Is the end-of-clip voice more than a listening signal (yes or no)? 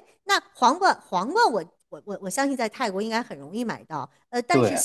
no